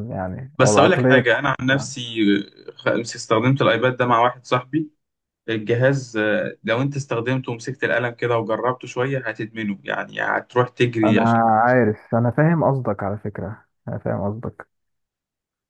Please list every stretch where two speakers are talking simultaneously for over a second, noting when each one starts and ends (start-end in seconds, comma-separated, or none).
0.6-1.9